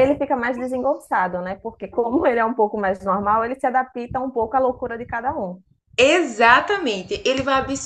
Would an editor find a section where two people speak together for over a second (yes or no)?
no